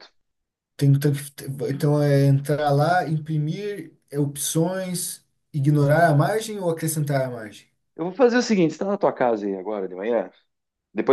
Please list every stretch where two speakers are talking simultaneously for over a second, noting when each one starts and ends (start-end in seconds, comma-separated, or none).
none